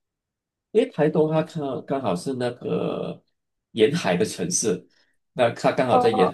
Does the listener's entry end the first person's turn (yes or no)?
no